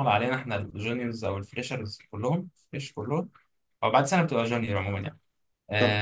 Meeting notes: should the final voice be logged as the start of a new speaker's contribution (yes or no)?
no